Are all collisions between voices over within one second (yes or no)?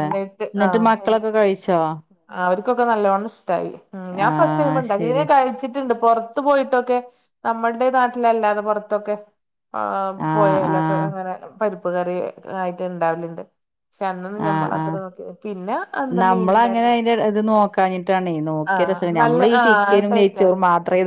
yes